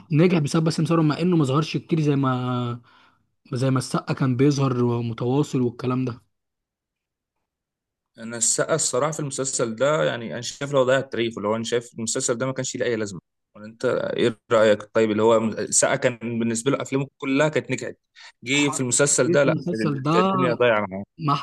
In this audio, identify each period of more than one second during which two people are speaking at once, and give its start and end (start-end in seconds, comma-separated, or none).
18.5-20.3